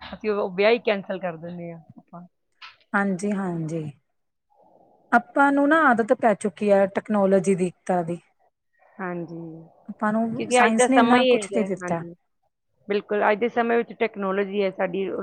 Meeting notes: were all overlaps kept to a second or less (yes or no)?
no